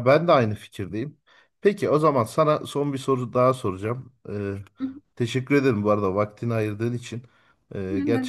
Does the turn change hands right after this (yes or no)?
no